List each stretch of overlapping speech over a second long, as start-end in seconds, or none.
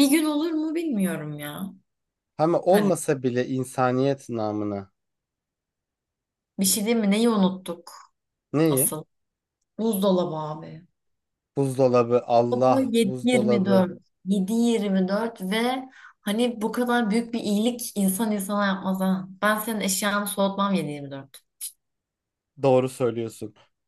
12.5-13.8